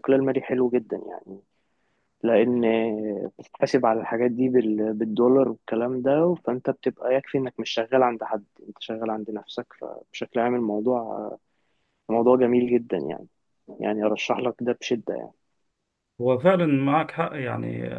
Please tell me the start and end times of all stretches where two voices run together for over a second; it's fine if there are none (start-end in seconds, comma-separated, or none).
none